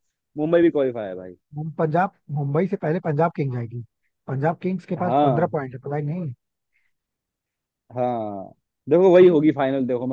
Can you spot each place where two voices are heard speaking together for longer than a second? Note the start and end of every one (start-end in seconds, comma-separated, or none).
none